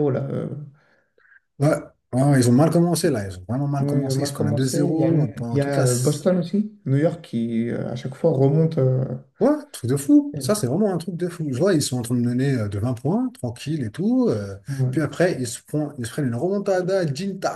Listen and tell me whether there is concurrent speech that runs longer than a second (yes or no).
yes